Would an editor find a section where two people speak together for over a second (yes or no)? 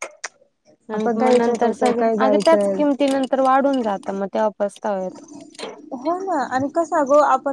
yes